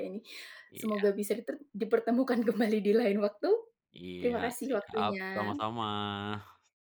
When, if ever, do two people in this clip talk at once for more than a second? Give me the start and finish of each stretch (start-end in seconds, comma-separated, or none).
4.2-5.7